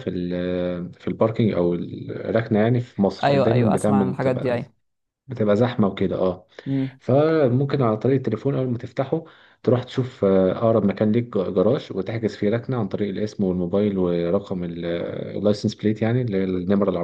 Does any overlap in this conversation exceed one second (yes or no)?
yes